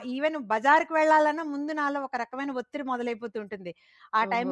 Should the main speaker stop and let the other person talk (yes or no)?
no